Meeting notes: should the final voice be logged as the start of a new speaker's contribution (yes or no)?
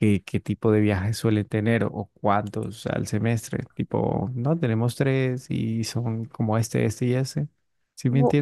yes